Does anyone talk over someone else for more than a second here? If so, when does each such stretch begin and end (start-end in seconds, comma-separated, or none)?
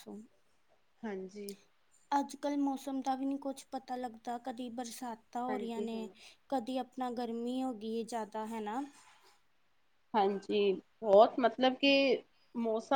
none